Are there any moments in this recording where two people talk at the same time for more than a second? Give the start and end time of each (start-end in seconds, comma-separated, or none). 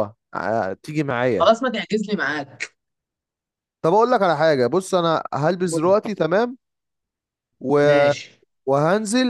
none